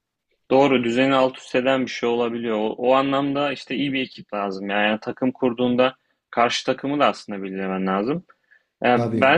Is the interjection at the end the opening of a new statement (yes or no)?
no